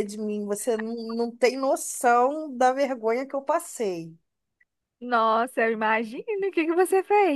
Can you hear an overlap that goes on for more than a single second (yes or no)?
no